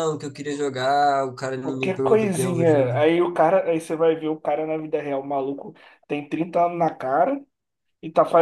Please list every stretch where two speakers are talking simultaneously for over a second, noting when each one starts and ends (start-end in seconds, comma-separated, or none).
1.6-3.0